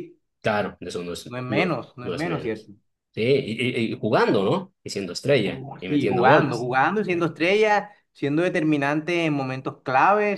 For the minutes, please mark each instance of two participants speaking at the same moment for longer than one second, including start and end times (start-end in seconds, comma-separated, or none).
1.2-2.7, 5.4-6.7